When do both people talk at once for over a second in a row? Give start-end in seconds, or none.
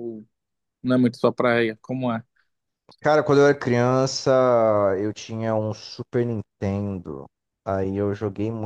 none